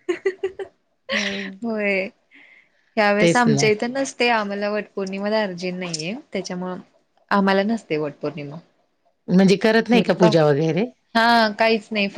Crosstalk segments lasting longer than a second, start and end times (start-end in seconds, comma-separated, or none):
none